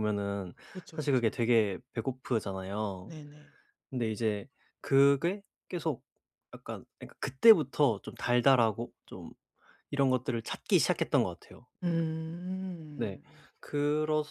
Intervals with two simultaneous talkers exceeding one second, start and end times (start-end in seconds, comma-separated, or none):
none